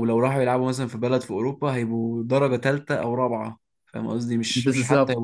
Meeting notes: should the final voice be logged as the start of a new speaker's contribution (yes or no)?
yes